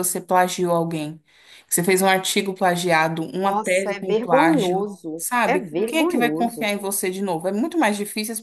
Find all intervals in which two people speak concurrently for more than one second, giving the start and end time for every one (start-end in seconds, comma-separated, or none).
3.4-6.7